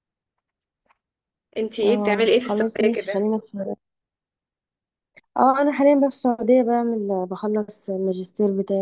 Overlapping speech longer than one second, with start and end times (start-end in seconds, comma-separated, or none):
1.8-3.3